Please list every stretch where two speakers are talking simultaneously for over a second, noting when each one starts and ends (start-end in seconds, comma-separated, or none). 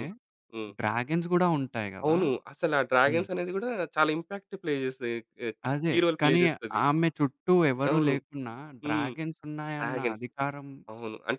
none